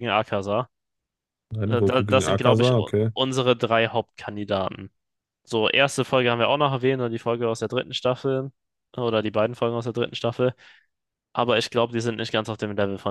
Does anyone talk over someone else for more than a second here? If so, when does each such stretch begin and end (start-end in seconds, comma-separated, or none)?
1.6-3.1